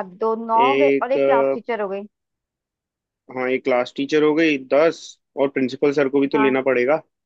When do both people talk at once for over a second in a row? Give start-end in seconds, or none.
none